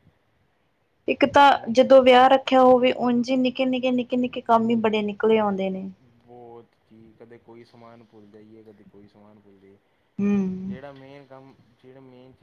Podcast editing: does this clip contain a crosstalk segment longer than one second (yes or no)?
no